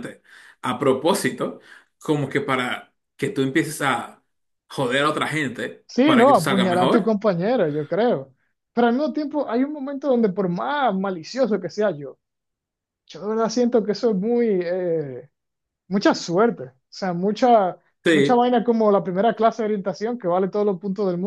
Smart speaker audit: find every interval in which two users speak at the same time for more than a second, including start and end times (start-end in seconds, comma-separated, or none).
5.9-7.2